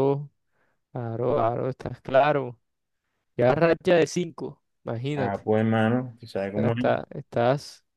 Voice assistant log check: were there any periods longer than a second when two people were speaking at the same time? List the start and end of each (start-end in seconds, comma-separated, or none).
none